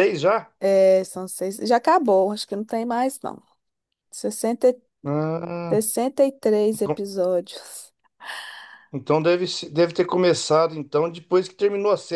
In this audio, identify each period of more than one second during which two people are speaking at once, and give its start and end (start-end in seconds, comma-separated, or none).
none